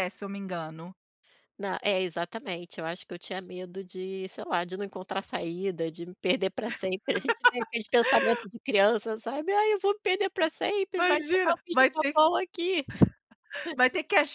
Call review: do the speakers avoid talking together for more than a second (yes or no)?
no